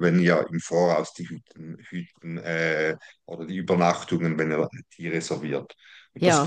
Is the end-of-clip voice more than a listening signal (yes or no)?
no